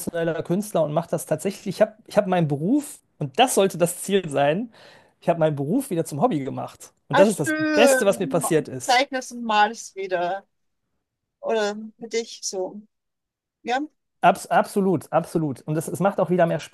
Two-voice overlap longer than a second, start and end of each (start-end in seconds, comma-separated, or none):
7.1-9.0